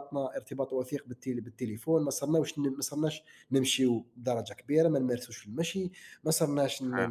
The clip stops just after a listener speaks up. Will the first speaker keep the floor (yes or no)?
yes